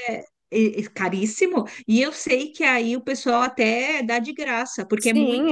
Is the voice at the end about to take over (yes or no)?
yes